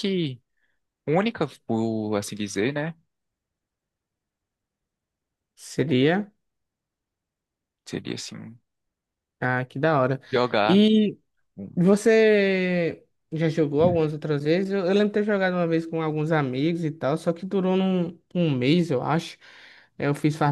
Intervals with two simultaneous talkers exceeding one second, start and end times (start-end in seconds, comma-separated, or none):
none